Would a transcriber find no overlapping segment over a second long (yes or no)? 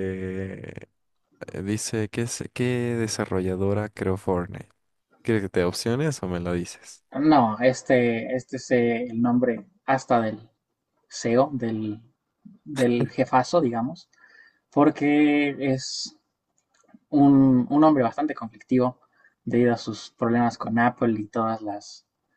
yes